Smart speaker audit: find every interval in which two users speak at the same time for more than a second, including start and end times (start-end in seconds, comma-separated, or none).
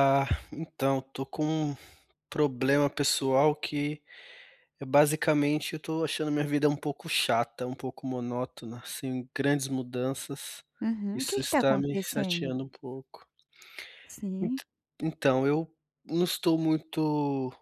11.1-12.5